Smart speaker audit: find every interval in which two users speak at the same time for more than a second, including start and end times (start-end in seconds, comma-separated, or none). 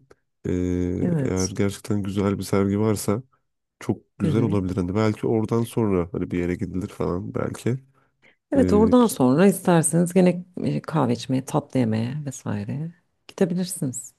none